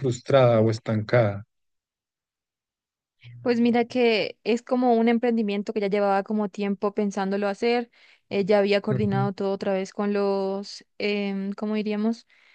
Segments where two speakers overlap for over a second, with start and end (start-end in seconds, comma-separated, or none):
none